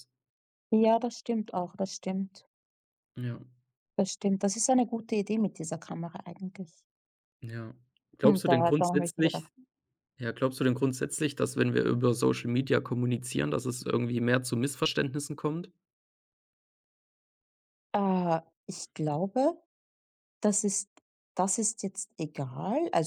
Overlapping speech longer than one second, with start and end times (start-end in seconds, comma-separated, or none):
8.2-9.5